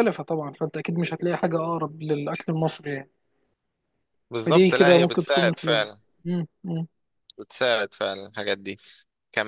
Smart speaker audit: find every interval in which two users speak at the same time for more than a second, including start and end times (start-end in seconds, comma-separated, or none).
4.5-6.0